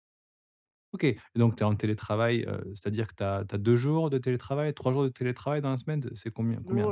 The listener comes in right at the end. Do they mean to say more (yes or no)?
yes